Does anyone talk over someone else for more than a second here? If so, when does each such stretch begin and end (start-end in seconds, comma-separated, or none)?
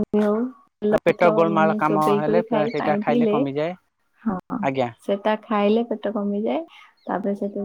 0.9-3.3